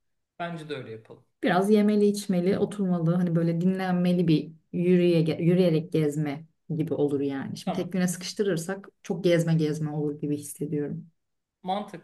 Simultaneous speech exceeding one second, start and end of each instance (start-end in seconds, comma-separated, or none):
none